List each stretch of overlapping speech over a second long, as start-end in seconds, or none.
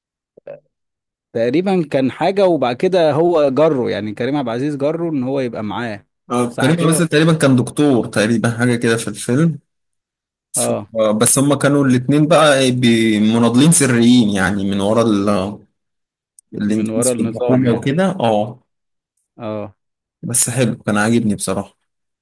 16.6-17.9